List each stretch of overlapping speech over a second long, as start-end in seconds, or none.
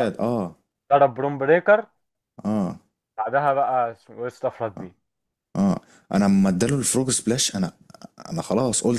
none